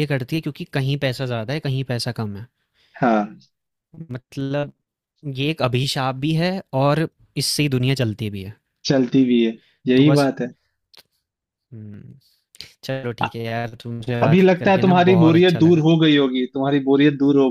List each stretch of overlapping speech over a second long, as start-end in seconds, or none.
14.2-15.9